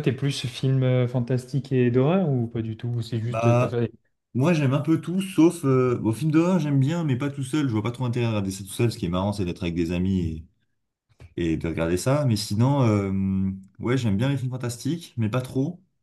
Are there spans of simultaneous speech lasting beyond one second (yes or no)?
no